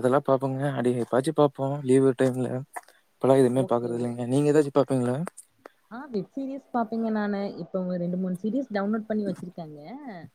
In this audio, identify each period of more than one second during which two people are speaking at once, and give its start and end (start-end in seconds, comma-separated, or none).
none